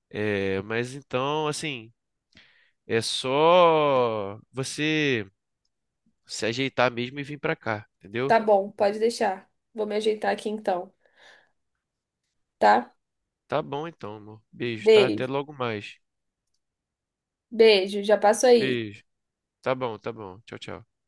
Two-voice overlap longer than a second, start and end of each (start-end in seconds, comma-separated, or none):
none